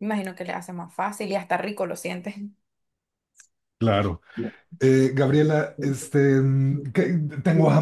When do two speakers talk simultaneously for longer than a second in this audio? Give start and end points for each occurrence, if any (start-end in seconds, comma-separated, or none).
none